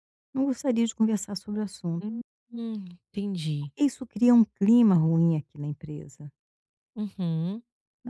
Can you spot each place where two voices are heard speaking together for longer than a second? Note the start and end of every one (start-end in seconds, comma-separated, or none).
none